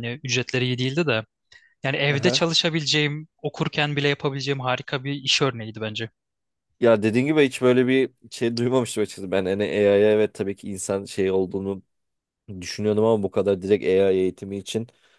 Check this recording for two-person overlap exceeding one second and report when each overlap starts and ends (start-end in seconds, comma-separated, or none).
none